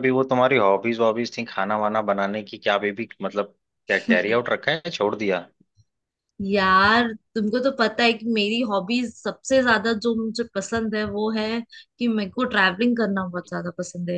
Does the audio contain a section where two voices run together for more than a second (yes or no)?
no